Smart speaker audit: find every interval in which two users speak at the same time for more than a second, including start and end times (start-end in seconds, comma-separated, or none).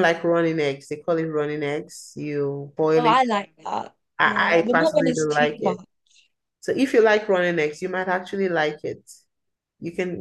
4.2-5.8